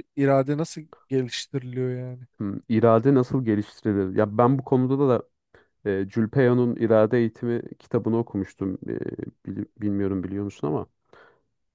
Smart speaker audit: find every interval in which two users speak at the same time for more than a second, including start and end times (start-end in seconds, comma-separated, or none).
none